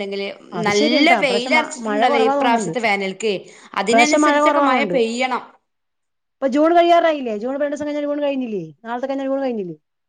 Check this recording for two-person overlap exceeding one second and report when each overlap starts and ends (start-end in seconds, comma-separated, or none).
0.7-2.7